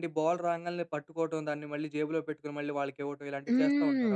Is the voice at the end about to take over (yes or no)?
yes